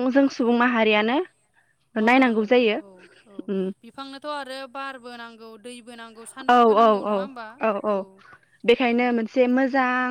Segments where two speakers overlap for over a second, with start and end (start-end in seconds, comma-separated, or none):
none